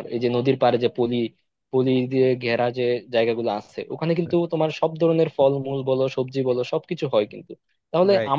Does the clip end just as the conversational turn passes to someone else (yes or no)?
no